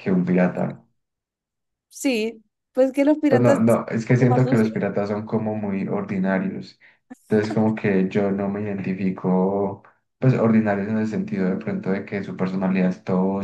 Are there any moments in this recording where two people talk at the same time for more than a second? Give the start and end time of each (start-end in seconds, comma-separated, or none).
3.3-4.7